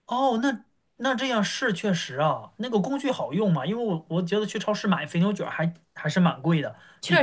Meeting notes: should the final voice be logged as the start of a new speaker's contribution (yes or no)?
no